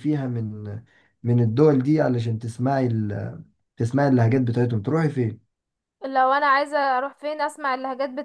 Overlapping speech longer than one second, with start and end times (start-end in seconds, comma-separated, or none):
none